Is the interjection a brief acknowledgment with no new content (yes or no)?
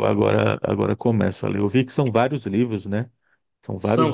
no